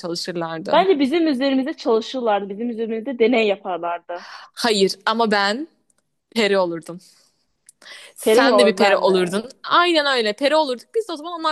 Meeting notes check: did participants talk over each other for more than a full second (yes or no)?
yes